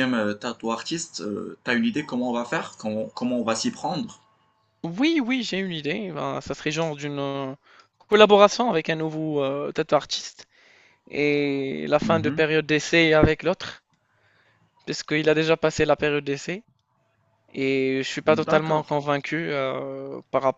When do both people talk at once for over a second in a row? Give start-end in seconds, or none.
none